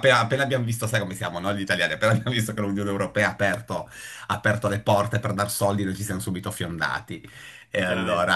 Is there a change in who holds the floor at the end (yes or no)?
no